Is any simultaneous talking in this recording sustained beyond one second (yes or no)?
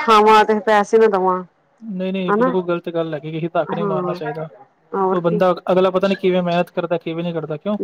no